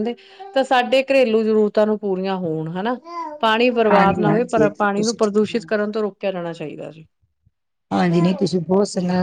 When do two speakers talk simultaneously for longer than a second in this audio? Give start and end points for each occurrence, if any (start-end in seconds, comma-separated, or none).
3.9-5.7